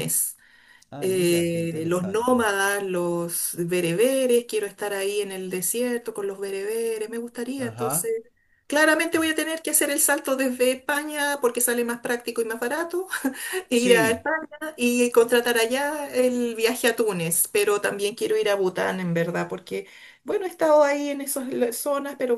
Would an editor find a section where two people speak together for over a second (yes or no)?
yes